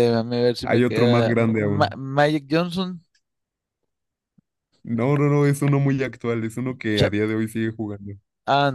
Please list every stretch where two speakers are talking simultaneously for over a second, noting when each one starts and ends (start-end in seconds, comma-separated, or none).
0.6-2.0